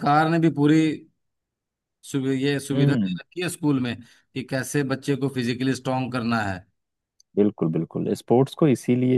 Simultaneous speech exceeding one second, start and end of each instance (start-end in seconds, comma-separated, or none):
none